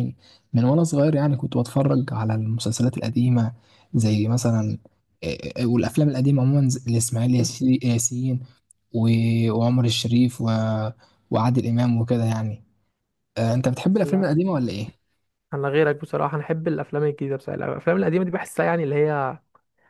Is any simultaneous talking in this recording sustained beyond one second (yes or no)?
no